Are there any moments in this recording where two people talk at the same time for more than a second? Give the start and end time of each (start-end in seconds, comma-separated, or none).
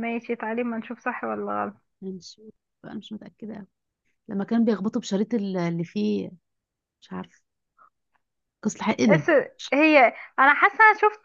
none